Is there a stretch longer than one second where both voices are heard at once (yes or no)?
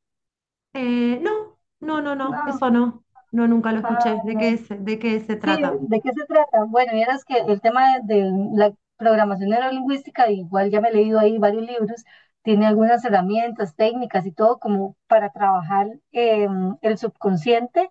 no